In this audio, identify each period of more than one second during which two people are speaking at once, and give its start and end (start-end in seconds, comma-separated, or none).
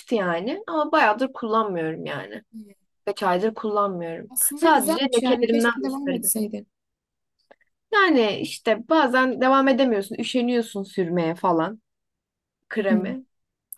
4.3-6.3